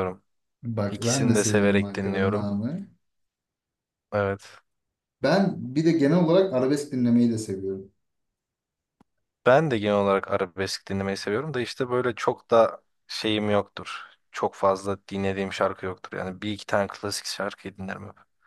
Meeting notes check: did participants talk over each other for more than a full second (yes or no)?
yes